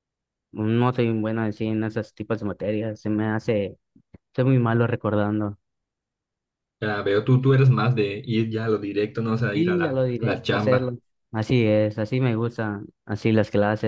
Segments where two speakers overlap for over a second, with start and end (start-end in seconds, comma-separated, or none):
9.5-11.0